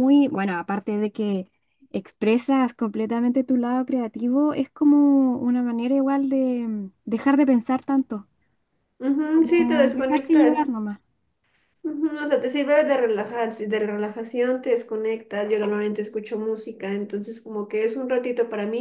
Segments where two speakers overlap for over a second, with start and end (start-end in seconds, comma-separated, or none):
9.3-10.7